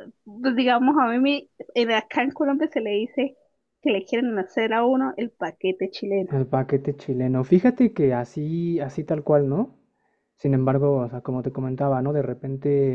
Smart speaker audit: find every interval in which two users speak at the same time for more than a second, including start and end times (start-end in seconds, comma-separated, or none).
none